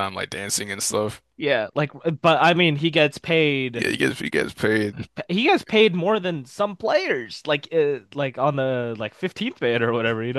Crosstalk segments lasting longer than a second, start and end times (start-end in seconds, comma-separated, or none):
none